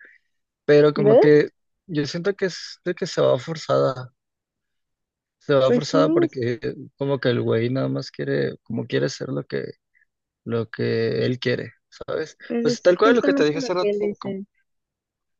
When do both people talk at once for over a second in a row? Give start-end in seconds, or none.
12.4-14.4